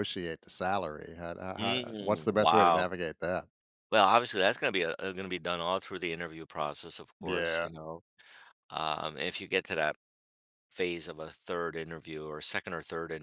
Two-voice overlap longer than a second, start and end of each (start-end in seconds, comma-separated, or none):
1.6-2.9